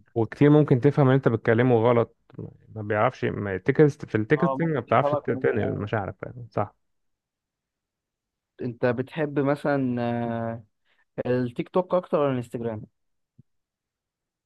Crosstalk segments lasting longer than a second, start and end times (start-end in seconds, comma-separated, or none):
4.4-5.8